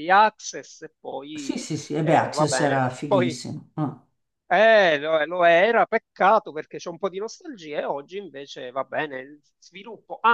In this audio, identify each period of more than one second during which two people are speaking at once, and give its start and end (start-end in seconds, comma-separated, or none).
1.3-3.4